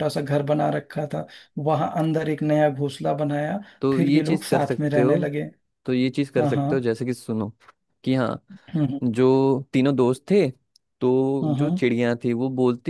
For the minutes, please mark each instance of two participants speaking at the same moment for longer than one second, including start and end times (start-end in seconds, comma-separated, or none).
3.8-5.2